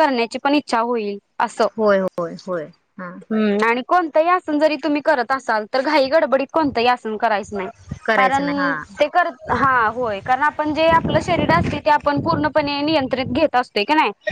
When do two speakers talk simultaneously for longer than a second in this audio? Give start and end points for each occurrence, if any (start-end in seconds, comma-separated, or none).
none